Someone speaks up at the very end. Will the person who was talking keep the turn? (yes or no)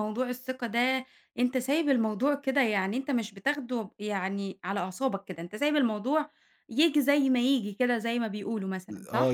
no